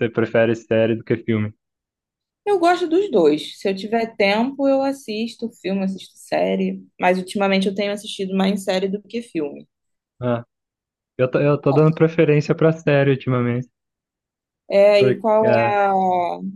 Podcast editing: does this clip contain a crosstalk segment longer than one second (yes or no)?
no